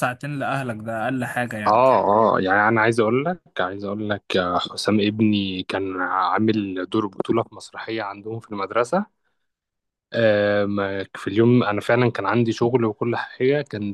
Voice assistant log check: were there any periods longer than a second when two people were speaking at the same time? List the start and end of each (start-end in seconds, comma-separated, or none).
none